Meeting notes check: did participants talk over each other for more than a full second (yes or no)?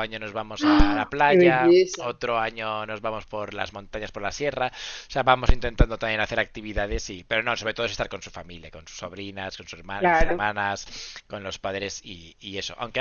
yes